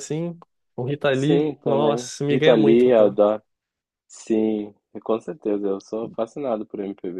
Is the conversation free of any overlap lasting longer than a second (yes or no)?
no